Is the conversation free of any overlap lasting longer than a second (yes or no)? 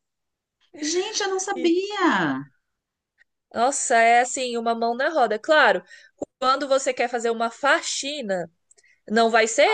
yes